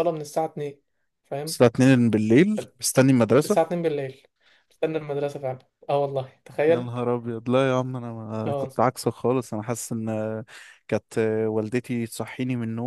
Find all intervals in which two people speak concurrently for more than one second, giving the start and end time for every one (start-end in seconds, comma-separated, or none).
none